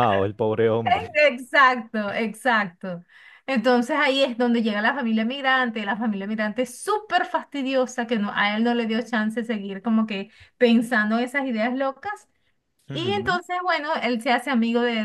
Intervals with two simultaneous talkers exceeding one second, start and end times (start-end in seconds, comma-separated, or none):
none